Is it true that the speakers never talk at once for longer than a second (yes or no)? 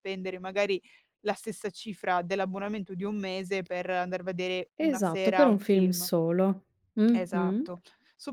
no